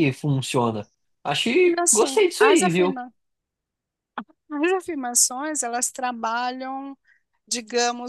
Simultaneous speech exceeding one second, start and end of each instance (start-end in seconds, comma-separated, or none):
1.6-3.0